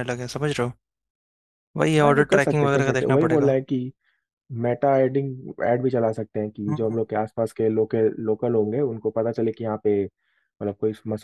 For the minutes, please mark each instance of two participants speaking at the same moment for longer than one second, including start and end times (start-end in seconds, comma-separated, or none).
2.0-3.5